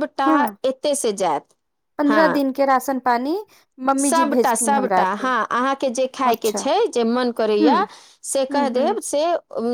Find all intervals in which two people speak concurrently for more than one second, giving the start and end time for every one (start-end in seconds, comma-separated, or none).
none